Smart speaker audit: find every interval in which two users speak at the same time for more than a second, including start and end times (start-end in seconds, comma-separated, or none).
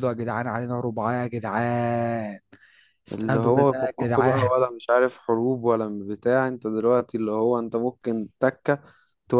3.1-4.5